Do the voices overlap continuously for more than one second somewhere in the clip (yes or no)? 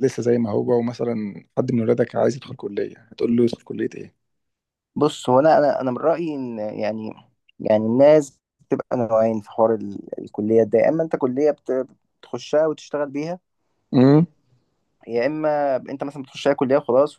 no